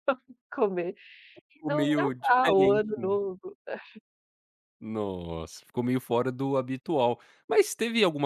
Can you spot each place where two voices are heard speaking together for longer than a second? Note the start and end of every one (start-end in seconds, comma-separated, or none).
1.7-3.2